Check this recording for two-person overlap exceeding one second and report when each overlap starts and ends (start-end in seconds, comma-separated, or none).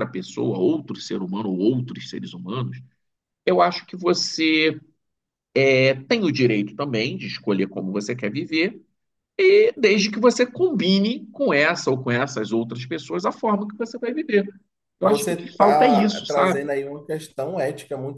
15.0-16.7